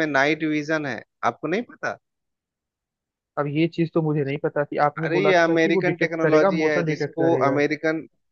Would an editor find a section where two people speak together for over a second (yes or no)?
yes